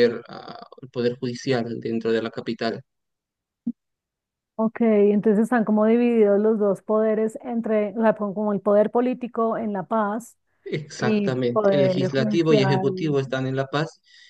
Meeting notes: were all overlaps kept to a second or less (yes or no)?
no